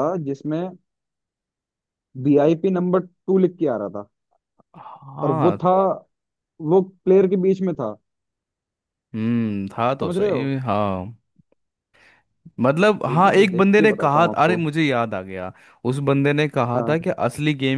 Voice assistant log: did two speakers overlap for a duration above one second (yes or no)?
yes